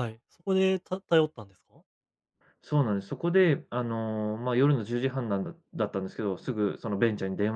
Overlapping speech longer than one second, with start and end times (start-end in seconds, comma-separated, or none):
none